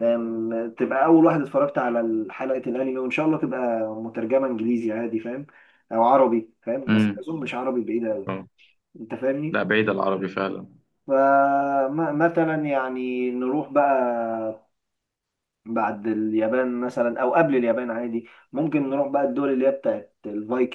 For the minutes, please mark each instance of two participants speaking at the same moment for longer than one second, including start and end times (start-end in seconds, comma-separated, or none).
none